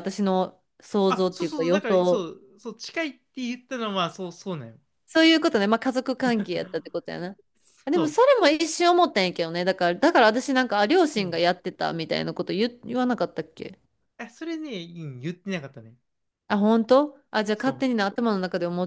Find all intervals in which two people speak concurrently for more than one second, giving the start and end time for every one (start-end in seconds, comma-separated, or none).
1.1-2.3